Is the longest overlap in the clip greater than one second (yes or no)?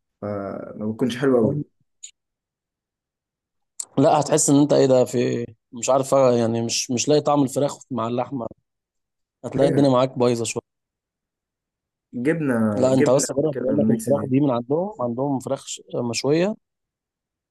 yes